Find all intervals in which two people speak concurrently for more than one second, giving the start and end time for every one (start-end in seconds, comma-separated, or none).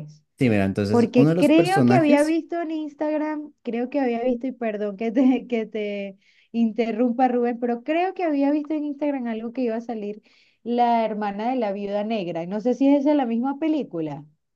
0.9-2.4